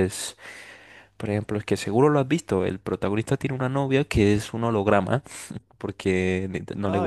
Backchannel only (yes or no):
yes